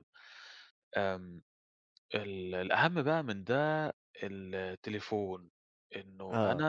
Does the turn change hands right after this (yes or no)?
no